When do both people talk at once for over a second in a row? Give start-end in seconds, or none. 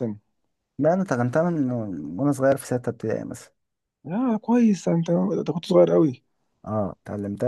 none